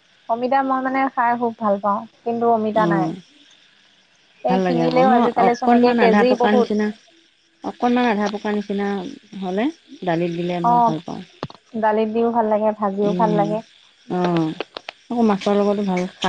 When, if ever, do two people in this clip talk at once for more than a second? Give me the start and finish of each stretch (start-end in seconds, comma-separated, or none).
4.5-6.7